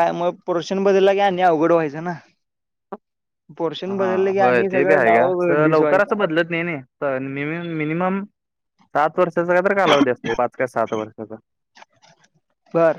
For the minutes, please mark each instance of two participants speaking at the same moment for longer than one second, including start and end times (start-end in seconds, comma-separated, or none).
3.9-6.1